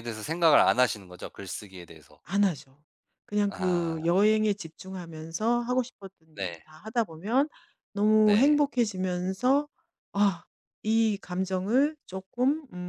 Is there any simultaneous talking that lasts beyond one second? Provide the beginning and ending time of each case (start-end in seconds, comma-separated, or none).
none